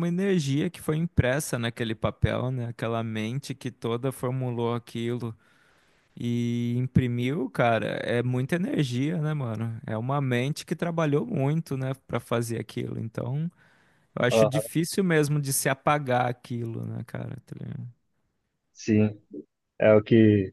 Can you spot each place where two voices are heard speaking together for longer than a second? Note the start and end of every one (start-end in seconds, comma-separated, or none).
none